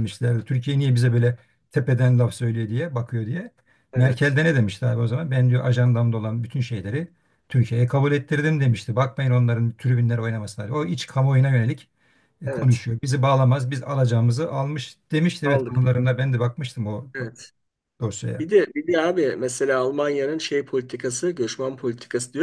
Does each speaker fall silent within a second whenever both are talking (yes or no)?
yes